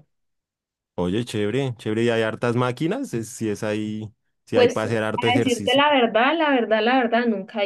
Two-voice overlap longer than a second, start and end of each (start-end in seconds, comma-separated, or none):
4.5-5.8